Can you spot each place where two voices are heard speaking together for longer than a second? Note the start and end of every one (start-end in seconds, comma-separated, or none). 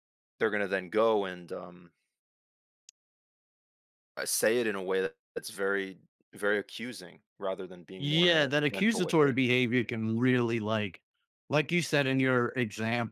8.0-9.4